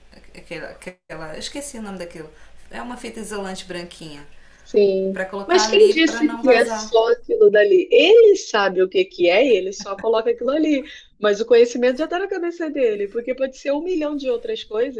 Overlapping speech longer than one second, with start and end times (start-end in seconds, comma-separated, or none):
5.1-6.9